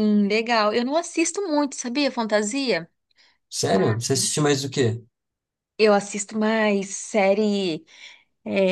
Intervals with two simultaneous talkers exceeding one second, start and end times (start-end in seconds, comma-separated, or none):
none